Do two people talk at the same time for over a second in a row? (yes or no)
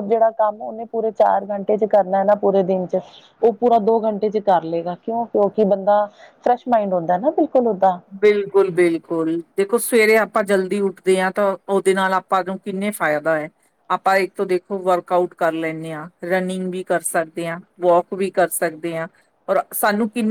no